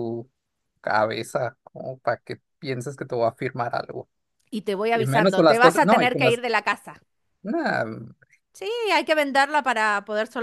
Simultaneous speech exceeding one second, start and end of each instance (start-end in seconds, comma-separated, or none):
4.9-6.4